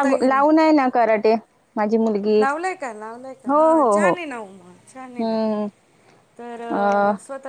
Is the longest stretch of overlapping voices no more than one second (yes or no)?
yes